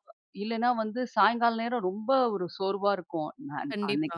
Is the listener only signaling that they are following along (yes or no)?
yes